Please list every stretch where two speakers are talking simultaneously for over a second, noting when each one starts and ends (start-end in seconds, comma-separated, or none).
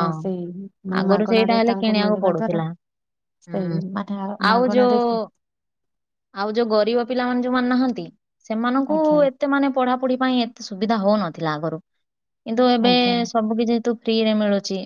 1.0-2.6